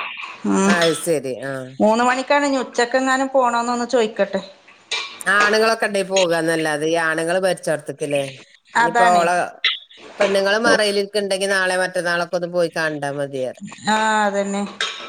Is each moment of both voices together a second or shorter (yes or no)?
yes